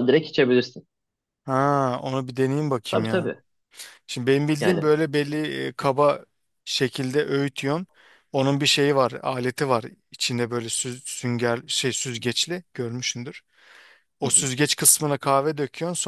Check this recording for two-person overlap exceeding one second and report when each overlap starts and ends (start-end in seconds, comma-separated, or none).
none